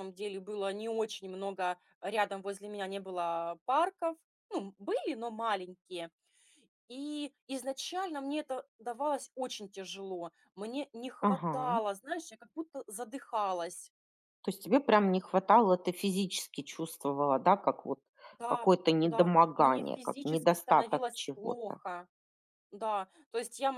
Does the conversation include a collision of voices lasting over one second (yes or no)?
yes